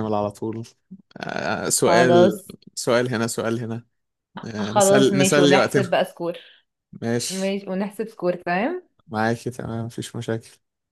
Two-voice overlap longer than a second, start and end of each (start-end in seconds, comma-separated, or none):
4.6-6.0